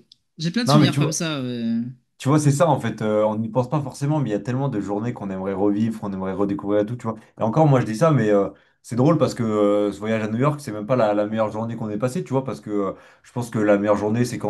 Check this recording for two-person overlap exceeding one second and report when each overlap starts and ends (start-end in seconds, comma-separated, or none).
none